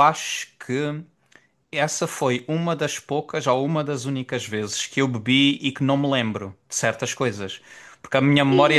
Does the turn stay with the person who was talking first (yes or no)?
no